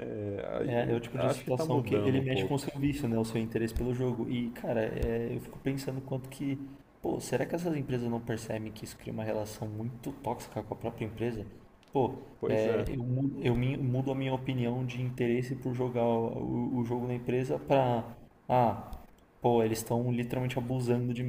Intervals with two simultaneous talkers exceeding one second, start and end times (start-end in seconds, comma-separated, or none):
0.6-2.6